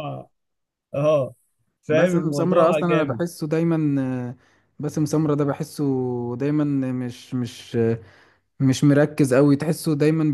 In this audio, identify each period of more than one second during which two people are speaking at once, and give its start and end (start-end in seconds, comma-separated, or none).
1.9-3.2